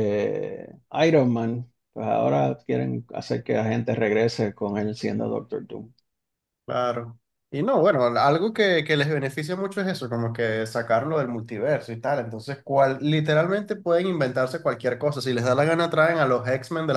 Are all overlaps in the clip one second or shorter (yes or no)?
yes